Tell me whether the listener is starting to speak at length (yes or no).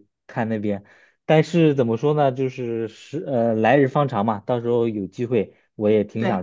no